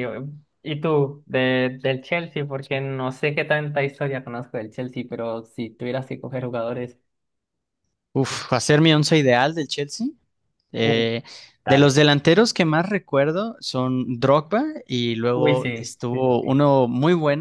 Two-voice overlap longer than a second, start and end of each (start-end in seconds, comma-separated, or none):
15.3-16.6